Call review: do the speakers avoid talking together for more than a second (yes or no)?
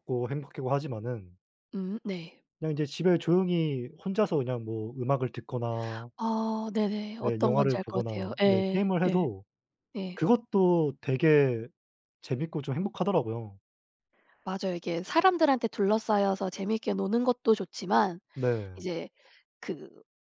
no